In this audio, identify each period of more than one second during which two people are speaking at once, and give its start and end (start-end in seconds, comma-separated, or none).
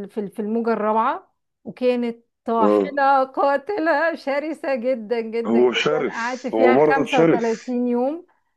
5.5-7.5